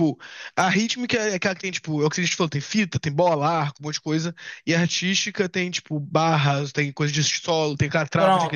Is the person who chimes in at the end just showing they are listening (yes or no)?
no